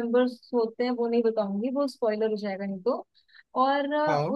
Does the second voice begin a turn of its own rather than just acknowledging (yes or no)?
no